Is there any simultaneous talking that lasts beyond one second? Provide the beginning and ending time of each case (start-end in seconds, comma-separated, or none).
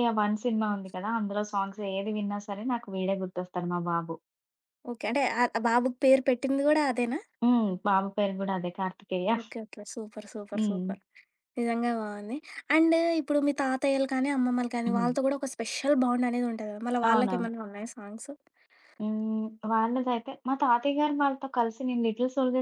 none